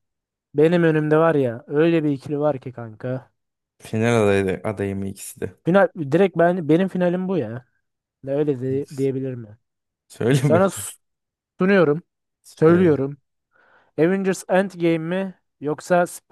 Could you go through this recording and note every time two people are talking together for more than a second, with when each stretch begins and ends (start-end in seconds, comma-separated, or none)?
none